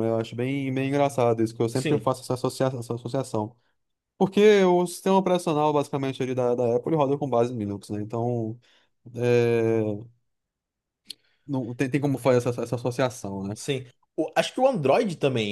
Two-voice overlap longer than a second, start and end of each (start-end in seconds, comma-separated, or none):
none